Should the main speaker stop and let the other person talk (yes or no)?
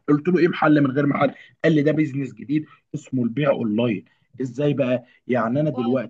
no